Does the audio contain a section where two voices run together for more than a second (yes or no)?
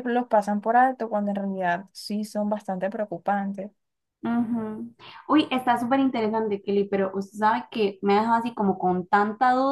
no